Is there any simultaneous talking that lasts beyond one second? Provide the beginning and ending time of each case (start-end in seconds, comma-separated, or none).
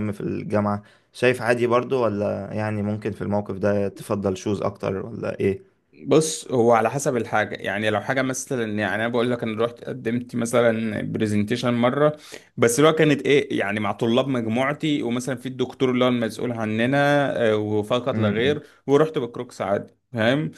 none